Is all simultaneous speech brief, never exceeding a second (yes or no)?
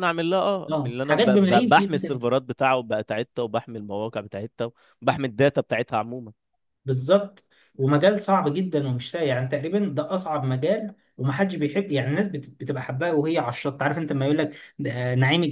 no